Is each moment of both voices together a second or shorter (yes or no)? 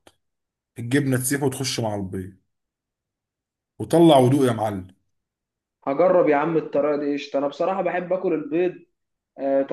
yes